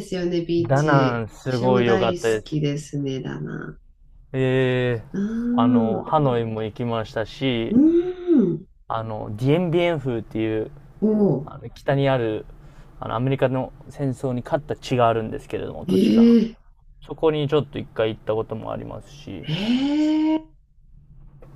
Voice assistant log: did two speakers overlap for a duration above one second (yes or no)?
yes